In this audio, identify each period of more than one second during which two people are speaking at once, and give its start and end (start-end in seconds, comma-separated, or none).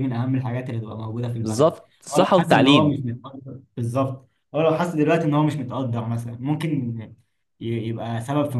1.4-3.0